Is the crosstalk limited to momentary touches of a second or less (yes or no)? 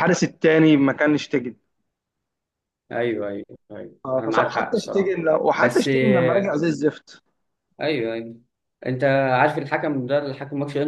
no